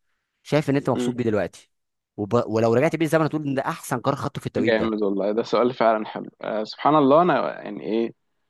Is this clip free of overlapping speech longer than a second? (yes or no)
yes